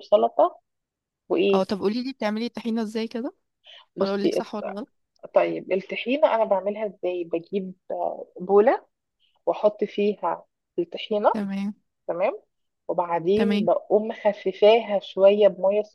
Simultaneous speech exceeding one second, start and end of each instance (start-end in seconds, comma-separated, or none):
none